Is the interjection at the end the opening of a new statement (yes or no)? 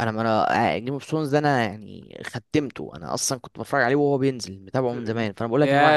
yes